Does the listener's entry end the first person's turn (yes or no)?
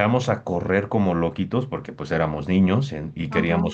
no